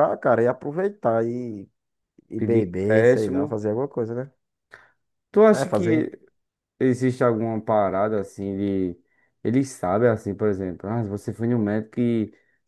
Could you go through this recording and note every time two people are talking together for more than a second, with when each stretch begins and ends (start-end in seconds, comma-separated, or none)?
2.4-3.6